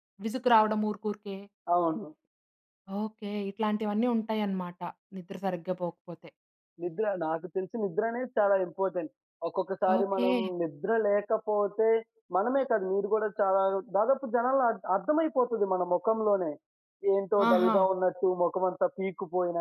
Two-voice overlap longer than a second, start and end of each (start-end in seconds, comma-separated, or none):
none